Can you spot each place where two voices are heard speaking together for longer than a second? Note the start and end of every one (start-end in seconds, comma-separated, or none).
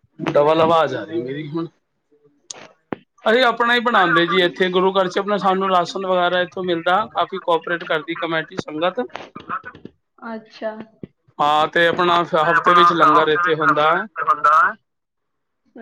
12.5-14.1